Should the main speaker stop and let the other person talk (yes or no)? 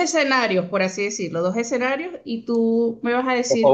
no